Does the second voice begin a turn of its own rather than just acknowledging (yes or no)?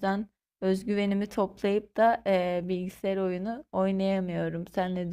yes